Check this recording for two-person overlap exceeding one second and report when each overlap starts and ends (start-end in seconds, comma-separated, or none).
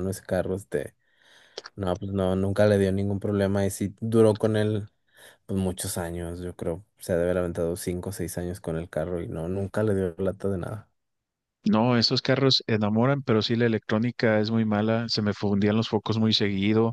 none